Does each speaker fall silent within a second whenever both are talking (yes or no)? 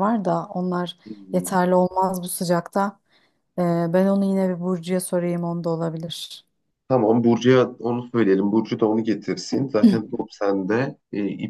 yes